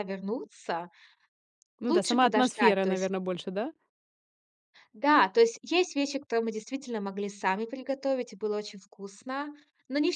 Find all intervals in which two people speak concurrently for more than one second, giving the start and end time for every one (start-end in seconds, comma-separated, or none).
1.8-3.1